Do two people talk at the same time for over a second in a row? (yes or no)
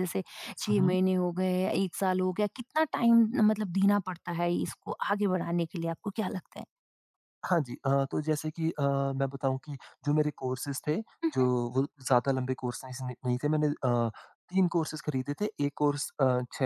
no